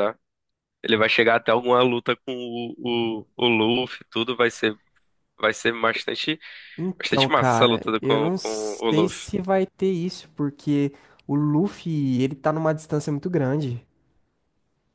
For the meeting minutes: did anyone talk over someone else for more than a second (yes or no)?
yes